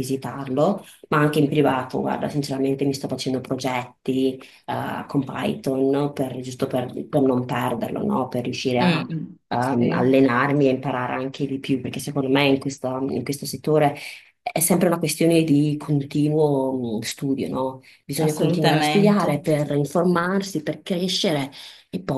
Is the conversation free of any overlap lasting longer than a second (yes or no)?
no